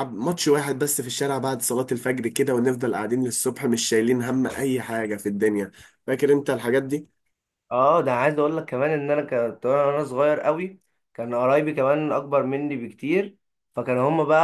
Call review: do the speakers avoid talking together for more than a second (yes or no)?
yes